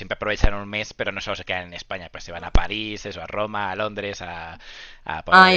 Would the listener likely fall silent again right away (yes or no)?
no